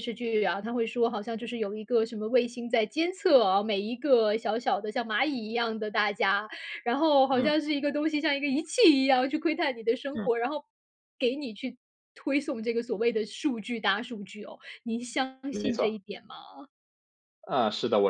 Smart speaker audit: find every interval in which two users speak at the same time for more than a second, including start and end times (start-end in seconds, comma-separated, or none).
none